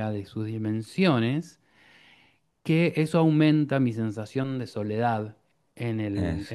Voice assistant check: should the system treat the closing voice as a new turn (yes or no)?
no